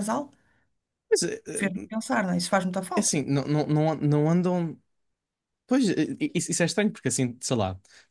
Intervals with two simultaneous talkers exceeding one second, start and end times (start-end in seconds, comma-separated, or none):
none